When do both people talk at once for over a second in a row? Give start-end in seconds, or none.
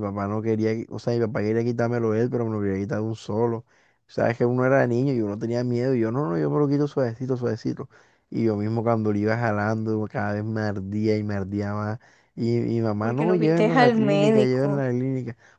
13.0-14.8